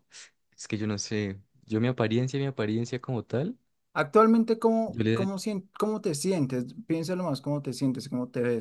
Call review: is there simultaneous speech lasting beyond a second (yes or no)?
no